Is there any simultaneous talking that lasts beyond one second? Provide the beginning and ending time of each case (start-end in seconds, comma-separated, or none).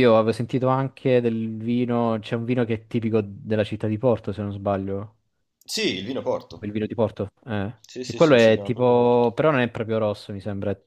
7.8-9.3